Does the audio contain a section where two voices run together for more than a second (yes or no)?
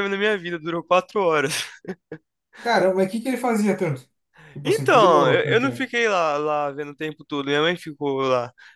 yes